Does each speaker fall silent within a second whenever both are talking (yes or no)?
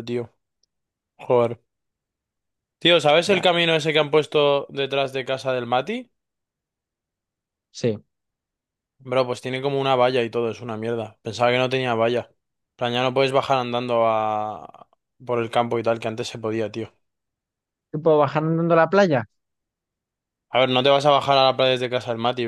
yes